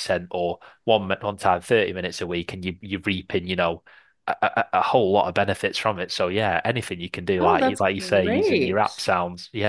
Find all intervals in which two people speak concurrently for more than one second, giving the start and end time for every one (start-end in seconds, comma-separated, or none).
7.4-8.9